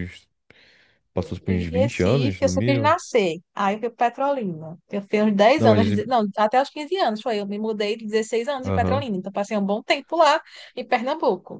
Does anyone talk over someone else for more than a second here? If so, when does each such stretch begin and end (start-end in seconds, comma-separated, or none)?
1.5-3.0